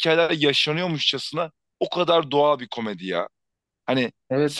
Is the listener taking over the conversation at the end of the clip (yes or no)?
yes